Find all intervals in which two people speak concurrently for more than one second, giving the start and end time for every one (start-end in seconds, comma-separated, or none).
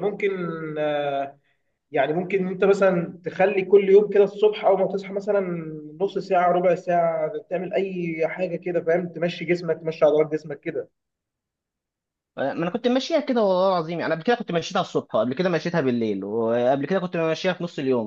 none